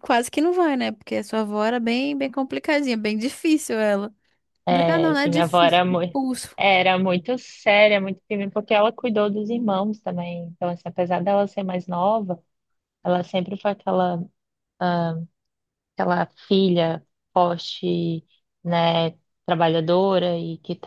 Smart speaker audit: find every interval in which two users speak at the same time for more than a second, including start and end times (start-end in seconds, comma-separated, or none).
4.7-6.2